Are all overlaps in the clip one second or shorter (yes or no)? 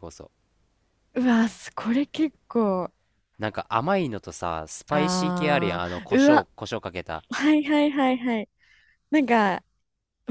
no